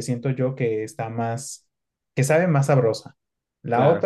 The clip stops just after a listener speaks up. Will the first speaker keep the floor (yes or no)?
yes